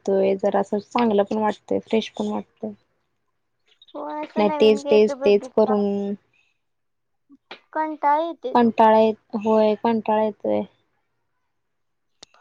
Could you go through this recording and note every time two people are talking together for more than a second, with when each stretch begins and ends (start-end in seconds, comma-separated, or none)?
4.4-5.8